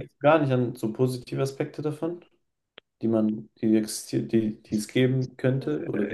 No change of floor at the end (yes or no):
no